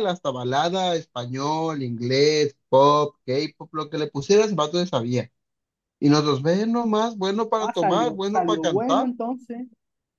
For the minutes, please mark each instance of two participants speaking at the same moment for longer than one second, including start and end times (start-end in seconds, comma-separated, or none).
7.6-9.1